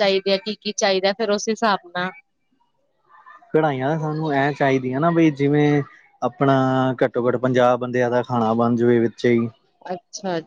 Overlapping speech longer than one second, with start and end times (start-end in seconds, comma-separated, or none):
none